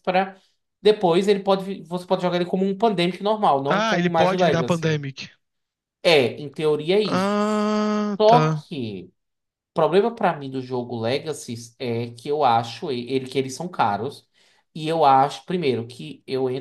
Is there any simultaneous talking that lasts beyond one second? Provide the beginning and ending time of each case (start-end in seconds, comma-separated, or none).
3.7-5.0